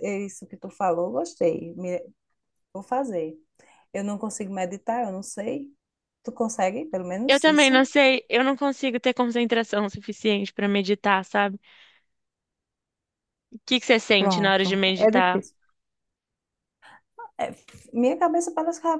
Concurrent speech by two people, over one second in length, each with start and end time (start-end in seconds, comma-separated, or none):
14.2-15.4